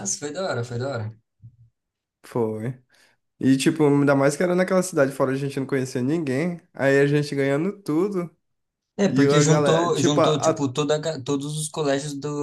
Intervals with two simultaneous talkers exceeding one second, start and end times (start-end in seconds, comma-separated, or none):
9.1-10.7